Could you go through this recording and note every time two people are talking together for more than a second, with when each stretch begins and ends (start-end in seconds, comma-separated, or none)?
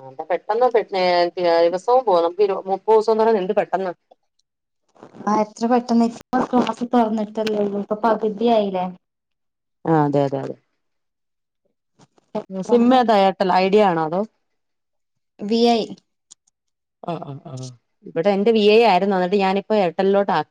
none